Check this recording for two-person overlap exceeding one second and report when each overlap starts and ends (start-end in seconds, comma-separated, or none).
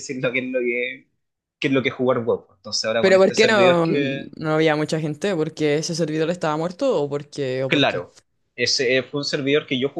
3.0-4.3